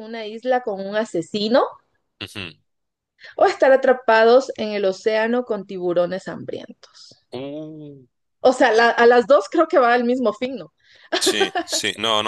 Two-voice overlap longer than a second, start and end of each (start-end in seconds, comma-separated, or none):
none